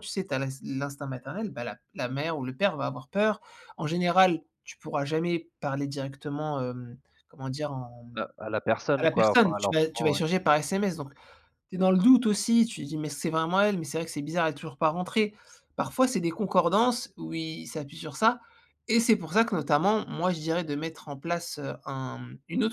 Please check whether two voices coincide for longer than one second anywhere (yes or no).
yes